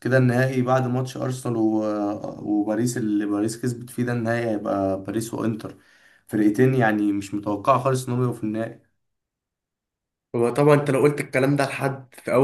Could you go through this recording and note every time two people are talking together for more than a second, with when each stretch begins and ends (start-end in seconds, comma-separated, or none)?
none